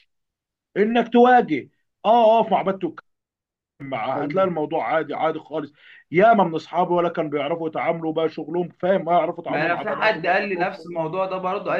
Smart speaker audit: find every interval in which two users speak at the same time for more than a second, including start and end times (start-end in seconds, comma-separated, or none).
9.5-11.0